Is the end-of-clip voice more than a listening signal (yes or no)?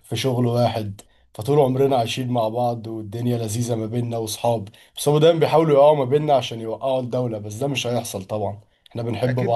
yes